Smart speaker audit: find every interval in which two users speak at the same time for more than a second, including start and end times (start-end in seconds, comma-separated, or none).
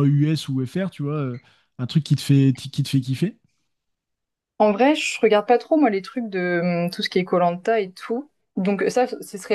none